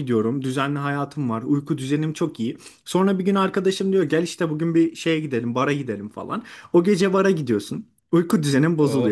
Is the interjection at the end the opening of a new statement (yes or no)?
no